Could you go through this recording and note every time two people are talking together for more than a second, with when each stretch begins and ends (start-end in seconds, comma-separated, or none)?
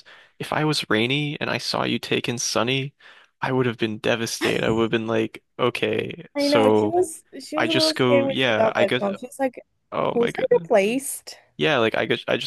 7.6-9.0